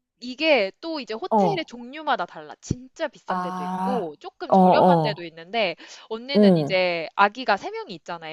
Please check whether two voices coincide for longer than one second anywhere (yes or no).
yes